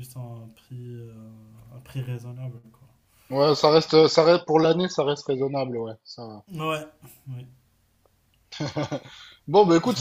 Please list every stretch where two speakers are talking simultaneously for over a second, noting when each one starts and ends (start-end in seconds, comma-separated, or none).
none